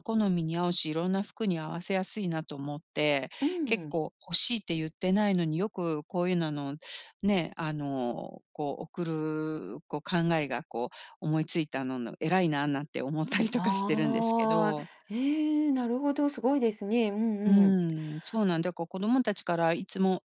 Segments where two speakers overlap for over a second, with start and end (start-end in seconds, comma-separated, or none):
13.5-14.9